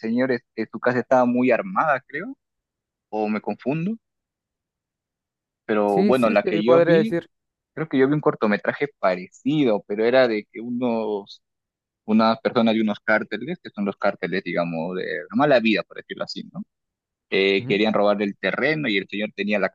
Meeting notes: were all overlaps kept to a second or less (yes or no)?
no